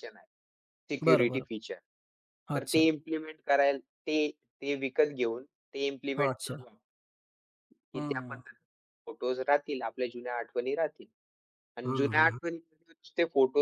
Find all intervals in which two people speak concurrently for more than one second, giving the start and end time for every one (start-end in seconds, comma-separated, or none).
none